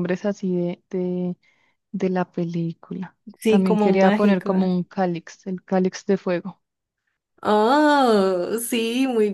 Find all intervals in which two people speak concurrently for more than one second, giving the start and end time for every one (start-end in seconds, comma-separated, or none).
3.4-4.7